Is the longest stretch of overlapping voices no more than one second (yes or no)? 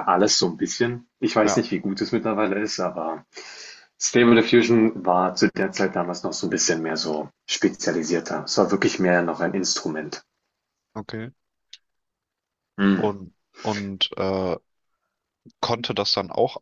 yes